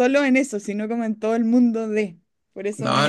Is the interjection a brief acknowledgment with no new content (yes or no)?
no